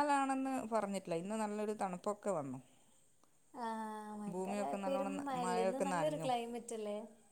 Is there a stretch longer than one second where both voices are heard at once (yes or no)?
yes